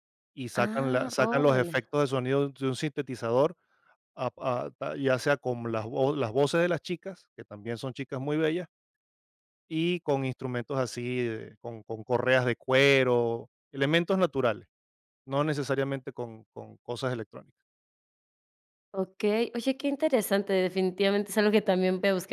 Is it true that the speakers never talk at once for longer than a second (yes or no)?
no